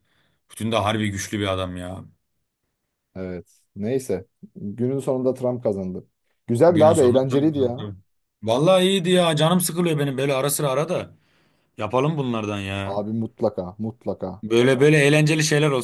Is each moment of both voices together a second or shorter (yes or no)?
no